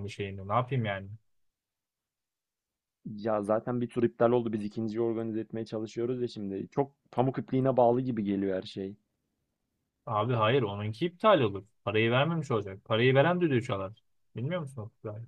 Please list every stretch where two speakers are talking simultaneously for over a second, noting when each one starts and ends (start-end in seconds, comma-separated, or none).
none